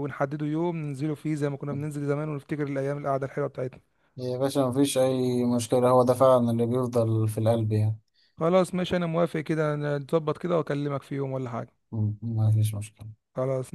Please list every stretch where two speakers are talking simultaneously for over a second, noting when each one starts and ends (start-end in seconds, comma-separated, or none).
none